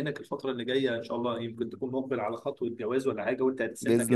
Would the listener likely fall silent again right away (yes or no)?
yes